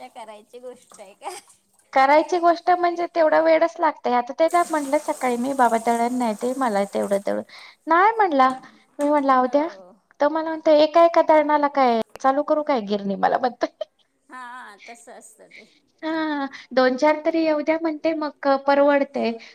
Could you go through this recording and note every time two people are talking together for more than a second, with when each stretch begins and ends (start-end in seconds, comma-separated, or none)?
none